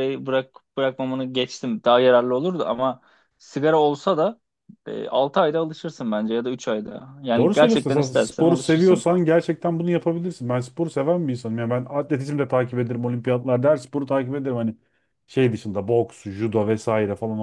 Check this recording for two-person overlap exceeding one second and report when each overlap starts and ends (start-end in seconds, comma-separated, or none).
7.4-9.1